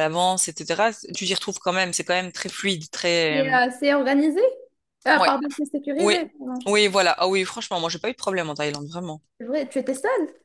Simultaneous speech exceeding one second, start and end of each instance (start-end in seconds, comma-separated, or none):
none